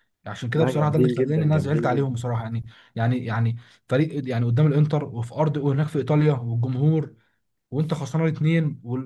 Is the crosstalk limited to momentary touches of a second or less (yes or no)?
no